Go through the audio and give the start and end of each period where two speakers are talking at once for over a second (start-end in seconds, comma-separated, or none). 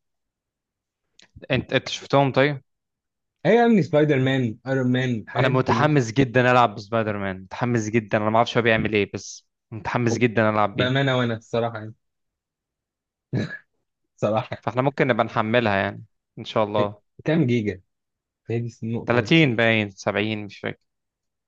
none